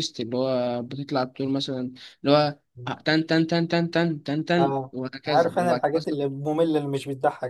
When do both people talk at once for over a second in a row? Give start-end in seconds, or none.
4.6-6.2